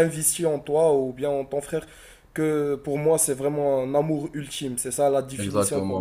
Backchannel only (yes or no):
no